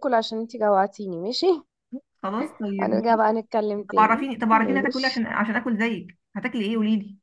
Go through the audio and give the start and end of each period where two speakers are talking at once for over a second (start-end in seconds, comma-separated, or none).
3.9-5.2